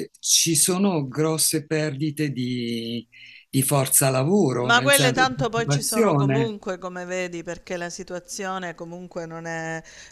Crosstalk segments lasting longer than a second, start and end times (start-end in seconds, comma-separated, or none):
4.6-6.5